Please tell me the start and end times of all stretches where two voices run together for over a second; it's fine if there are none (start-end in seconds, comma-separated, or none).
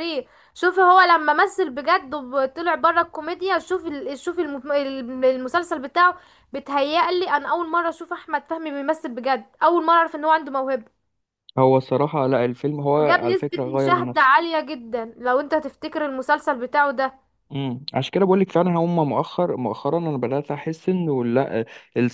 13.0-14.3